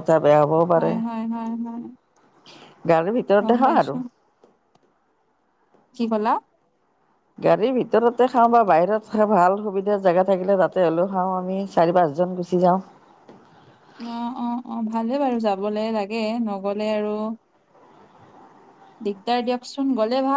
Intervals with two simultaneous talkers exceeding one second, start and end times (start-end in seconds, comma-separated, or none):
none